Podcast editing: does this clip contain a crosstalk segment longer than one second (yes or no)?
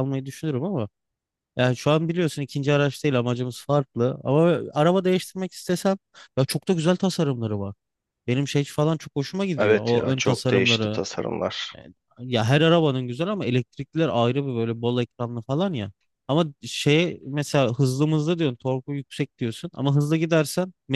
yes